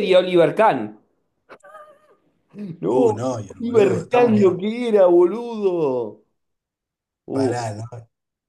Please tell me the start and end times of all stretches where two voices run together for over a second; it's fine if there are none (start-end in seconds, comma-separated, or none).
2.9-4.6